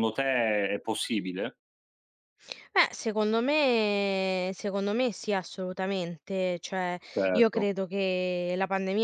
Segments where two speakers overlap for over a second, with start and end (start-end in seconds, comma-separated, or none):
none